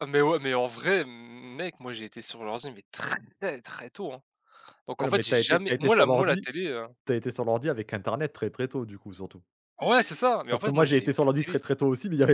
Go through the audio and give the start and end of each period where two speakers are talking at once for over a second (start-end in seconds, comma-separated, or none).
5.0-6.5, 10.5-11.7